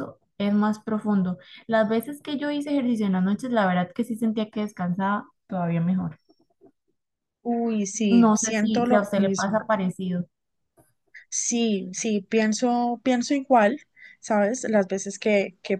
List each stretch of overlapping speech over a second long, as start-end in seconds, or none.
8.1-9.6